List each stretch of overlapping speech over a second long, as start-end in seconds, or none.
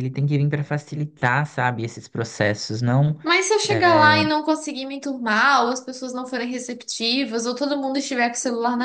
none